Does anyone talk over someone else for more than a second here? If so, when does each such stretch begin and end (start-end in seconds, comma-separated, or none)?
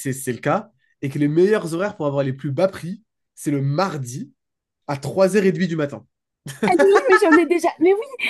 none